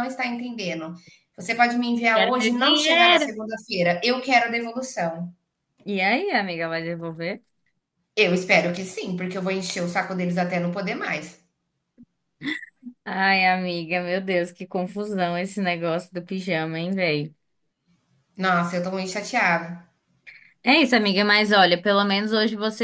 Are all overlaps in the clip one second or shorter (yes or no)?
no